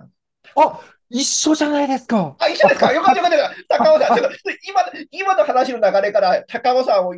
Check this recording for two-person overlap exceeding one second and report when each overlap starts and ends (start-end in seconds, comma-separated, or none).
none